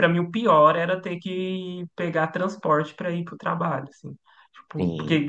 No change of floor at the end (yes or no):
yes